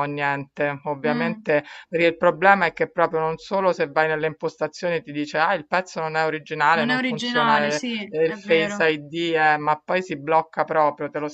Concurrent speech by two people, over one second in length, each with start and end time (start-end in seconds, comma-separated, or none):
6.7-8.9